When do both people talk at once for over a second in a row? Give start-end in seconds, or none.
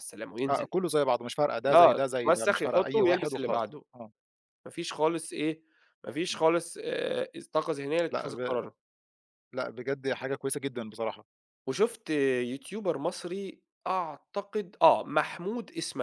1.7-3.8